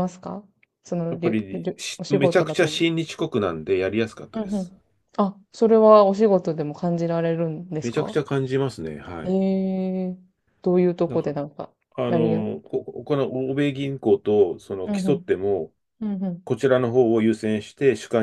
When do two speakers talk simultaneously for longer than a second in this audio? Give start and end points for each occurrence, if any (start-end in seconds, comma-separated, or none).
1.1-2.9